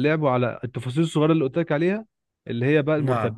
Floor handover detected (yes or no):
no